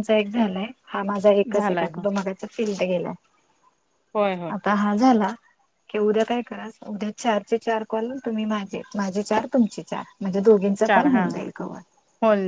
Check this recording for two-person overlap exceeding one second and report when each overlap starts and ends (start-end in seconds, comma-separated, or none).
none